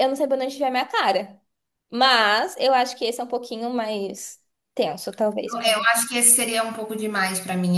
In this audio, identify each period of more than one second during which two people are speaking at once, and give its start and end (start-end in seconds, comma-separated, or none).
none